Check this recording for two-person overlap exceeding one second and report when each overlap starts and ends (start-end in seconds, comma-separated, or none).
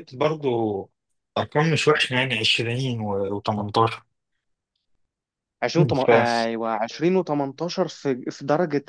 none